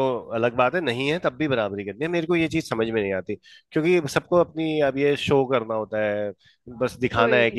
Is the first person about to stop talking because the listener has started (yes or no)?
no